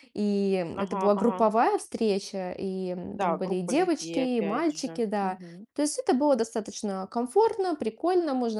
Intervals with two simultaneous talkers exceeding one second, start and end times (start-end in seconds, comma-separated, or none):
3.1-5.4